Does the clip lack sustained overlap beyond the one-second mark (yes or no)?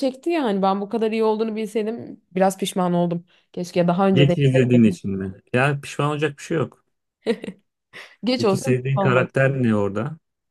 no